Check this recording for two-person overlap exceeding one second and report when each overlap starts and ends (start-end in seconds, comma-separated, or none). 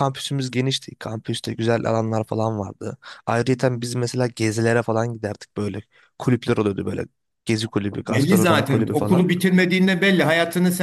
8.0-9.3